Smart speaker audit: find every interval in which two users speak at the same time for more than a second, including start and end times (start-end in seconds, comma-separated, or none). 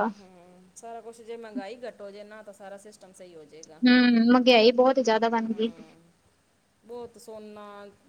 none